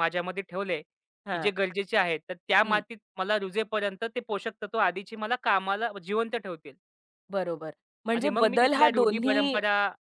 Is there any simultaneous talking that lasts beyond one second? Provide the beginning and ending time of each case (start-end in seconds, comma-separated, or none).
8.2-9.6